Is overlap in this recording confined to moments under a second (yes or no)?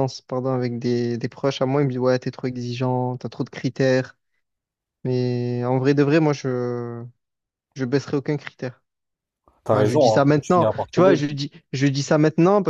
no